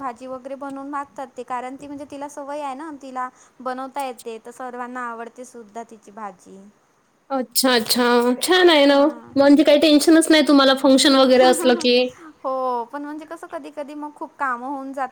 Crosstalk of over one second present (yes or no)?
no